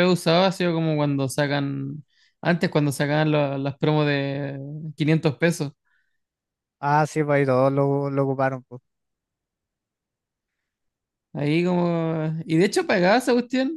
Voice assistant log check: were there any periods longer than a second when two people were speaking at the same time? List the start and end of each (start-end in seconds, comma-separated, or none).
none